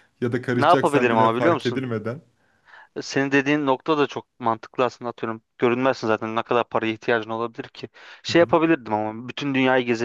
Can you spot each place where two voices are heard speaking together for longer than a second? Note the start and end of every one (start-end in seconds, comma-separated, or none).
0.6-1.9